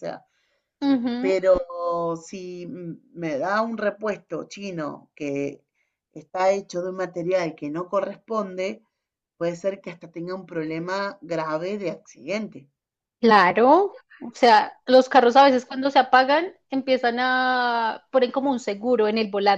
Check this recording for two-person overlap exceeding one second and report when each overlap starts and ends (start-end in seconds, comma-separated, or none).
none